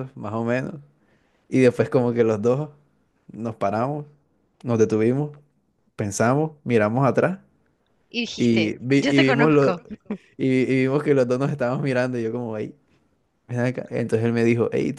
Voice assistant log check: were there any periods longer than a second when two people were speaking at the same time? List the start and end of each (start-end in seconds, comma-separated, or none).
8.3-9.8